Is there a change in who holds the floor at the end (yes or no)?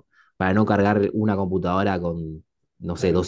no